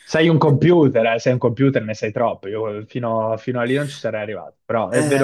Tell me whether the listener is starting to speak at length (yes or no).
yes